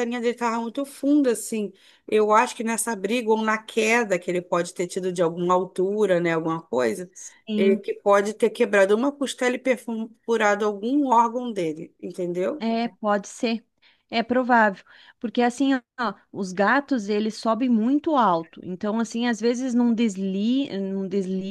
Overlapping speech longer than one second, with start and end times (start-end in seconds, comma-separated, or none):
none